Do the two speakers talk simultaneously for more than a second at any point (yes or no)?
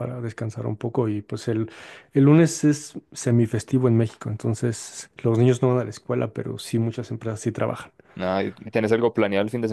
no